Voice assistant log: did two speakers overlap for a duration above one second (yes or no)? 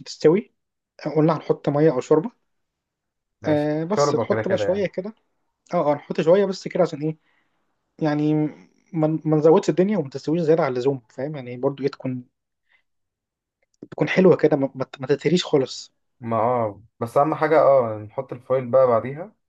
yes